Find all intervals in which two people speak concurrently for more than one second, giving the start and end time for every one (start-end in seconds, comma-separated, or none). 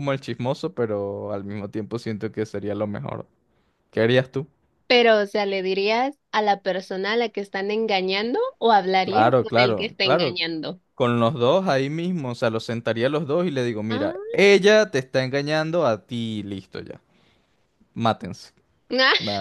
9.0-10.4